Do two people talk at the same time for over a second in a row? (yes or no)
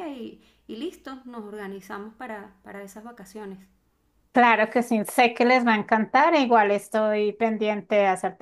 no